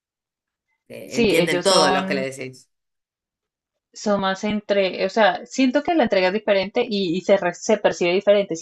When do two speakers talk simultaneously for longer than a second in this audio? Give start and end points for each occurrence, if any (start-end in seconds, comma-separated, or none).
1.1-2.3